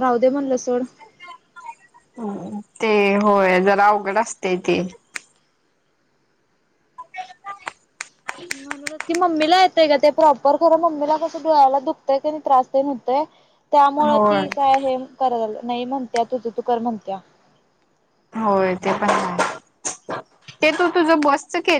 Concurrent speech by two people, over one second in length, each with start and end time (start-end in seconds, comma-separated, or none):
none